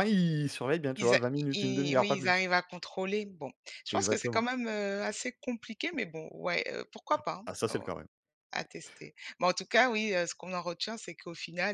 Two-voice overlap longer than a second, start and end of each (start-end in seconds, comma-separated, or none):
1.0-2.5